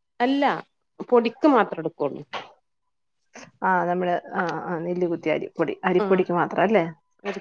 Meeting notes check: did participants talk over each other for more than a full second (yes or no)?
no